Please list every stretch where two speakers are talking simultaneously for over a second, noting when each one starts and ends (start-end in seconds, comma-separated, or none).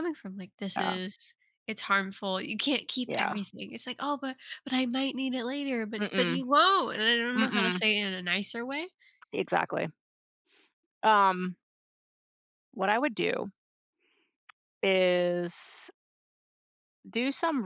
none